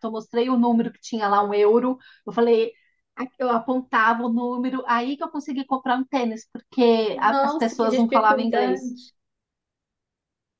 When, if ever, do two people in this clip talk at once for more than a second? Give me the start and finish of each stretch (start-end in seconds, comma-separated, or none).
7.1-8.9